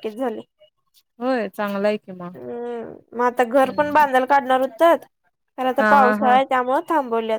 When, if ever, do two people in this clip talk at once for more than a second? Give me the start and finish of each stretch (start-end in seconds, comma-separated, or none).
none